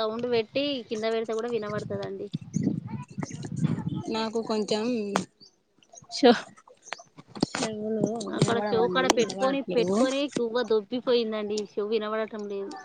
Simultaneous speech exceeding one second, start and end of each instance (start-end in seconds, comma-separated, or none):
8.4-10.0